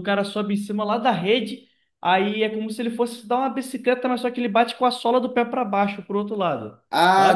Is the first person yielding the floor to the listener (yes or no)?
yes